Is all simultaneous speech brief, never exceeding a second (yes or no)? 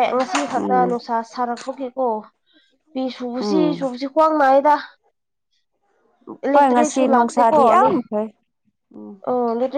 yes